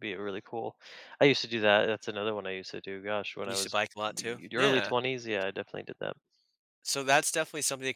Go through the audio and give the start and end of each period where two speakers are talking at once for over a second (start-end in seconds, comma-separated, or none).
3.4-4.9